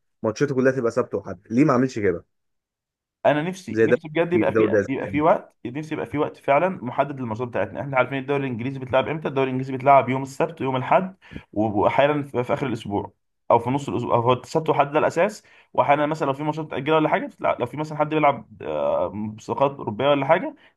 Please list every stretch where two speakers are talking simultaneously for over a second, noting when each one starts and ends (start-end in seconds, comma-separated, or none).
3.7-5.2